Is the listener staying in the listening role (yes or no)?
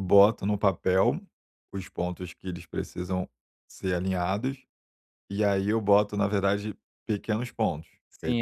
no